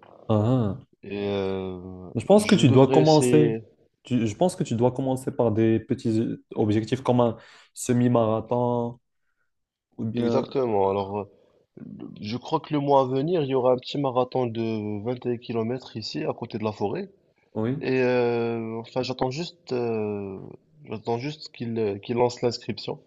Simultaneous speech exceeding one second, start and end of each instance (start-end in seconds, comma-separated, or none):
2.1-3.6